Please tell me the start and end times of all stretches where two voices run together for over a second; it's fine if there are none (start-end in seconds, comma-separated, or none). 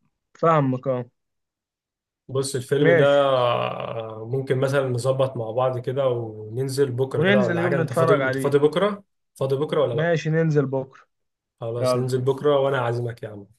7.2-8.6